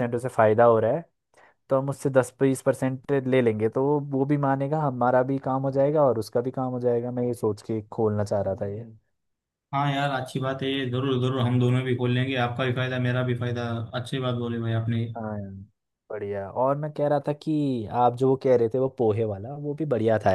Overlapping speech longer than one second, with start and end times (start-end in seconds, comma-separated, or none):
none